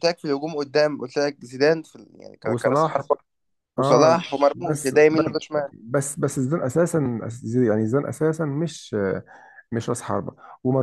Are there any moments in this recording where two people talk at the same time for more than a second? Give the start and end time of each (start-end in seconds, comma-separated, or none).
3.8-5.7